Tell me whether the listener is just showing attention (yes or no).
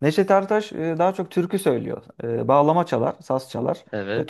yes